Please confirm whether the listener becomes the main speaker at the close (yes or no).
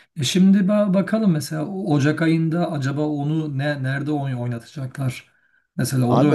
yes